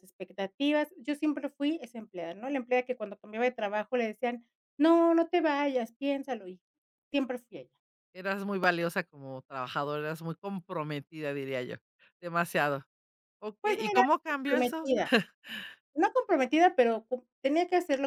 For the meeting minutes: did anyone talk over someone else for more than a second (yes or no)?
yes